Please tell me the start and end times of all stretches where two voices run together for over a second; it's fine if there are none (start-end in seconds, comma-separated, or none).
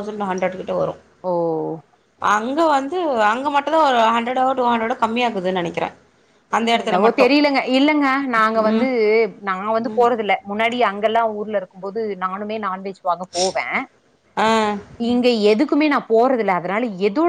none